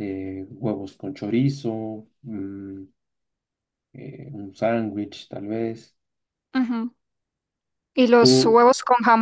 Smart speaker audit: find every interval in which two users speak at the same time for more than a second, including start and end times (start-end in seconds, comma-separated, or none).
none